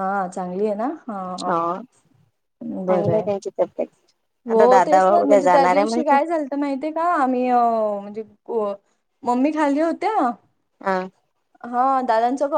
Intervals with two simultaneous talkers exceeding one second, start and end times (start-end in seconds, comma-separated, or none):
4.5-6.2